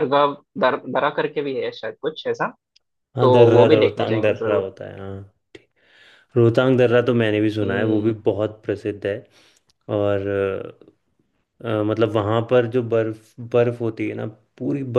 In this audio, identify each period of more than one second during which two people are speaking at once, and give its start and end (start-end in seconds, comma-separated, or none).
3.2-4.7